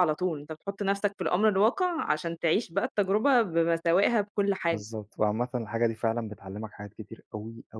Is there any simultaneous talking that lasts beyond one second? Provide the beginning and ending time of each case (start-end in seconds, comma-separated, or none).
none